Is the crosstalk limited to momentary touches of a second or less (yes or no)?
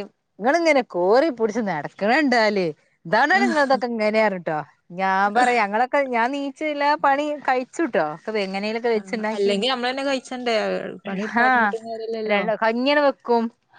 yes